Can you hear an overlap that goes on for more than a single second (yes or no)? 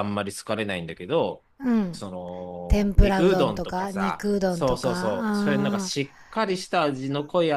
yes